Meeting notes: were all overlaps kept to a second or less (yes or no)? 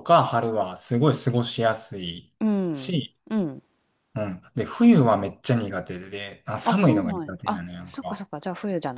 no